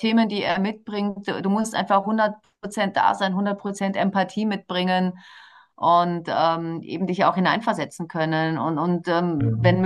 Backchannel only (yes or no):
yes